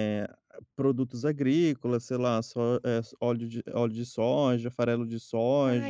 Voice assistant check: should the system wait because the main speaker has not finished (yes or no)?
no